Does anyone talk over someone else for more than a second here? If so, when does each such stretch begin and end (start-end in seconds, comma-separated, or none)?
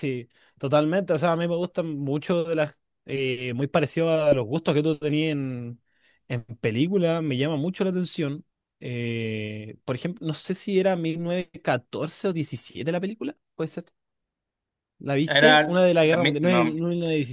15.2-16.8